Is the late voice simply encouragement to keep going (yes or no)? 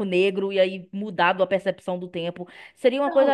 no